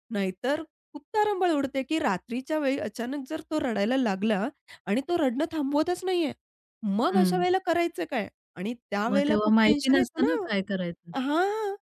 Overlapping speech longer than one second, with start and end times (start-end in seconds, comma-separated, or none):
9.1-10.7